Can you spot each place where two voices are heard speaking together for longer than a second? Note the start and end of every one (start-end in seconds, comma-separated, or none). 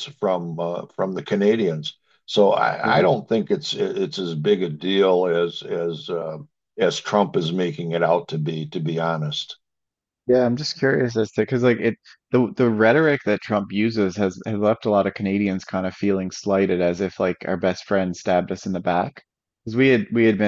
none